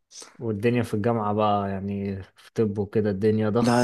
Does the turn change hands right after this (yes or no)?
yes